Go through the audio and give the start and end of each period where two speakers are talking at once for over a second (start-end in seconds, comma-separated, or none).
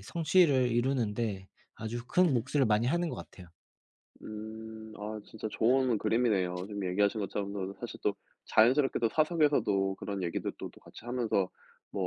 none